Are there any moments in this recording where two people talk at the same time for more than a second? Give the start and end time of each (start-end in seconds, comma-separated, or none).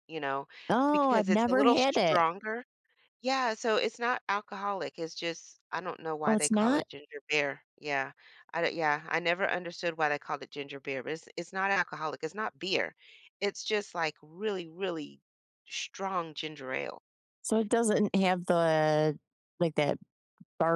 0.9-2.2